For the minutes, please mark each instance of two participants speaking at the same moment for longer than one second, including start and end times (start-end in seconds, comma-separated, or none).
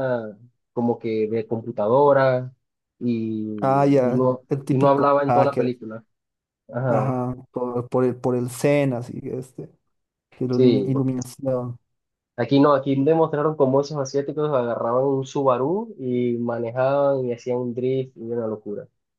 3.6-5.7